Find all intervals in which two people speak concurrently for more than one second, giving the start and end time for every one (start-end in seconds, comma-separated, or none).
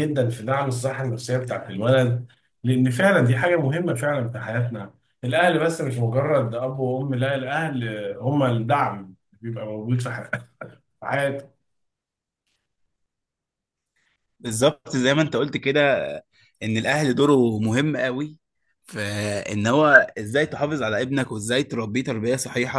none